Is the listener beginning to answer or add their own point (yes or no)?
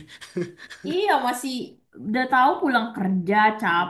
yes